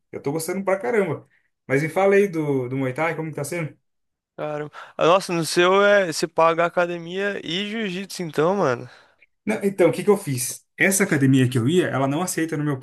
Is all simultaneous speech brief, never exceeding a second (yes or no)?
yes